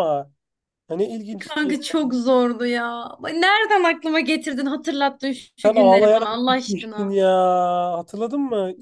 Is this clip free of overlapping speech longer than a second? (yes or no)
no